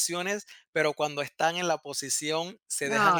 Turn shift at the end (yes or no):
no